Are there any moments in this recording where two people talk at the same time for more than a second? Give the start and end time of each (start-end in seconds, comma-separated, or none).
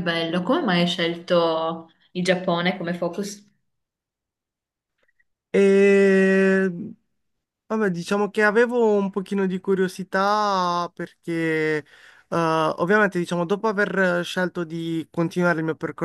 none